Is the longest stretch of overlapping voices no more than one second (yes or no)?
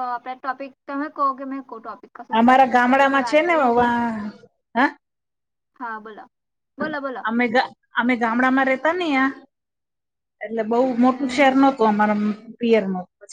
no